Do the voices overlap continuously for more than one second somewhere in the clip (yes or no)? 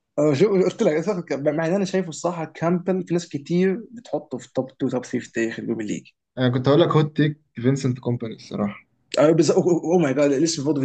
no